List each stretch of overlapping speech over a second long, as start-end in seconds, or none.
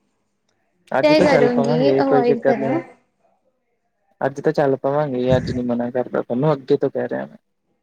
1.0-2.8